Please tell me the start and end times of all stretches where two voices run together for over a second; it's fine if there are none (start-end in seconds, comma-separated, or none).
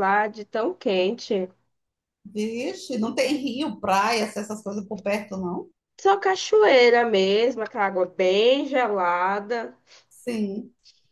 none